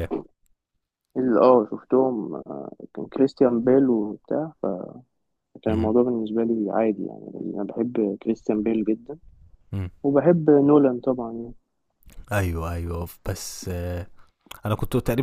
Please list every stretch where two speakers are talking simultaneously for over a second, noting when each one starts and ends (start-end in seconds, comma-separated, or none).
none